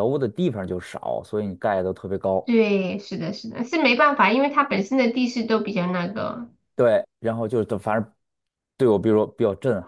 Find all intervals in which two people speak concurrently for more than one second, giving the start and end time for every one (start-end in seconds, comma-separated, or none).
none